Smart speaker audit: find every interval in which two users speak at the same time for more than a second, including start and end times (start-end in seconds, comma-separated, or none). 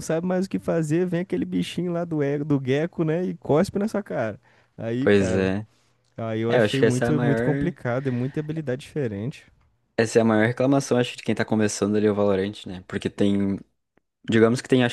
6.5-7.8